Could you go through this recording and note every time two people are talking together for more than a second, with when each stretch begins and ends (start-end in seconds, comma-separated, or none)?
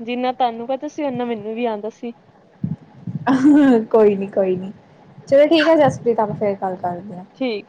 none